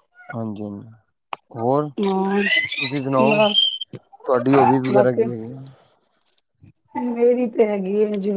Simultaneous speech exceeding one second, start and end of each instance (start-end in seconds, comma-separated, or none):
2.1-3.4